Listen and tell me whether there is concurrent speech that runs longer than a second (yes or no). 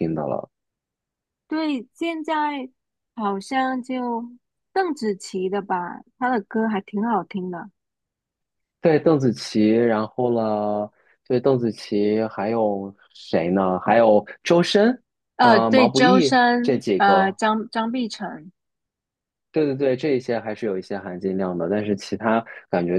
yes